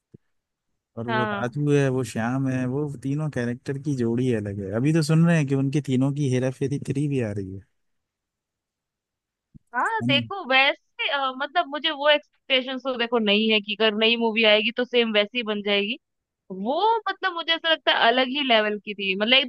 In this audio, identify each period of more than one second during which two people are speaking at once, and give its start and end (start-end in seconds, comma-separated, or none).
none